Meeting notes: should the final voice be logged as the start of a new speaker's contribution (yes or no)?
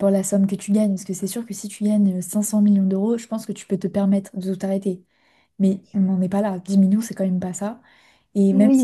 yes